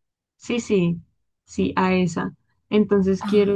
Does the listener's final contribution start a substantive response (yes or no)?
no